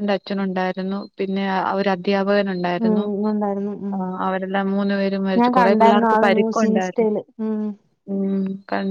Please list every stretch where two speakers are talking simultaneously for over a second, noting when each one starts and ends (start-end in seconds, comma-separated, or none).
5.4-7.1